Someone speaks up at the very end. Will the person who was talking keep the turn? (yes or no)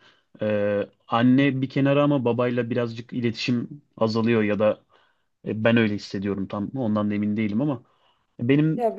yes